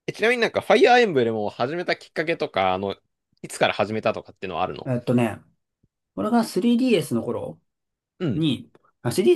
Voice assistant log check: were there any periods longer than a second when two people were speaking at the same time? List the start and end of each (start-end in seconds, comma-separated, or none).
none